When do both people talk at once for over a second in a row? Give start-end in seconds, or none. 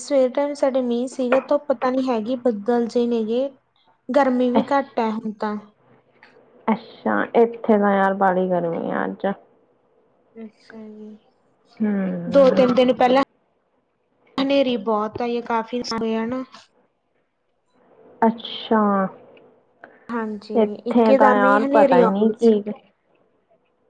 20.6-22.5